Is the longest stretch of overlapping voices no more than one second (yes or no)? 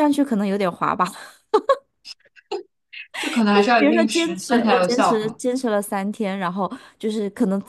no